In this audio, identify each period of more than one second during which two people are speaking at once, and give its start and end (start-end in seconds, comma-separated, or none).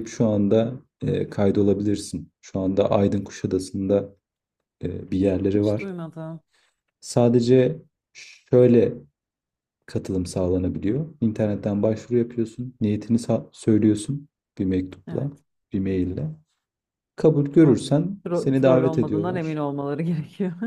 17.6-19.6